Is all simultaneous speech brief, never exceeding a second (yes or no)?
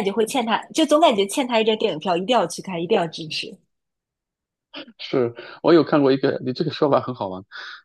yes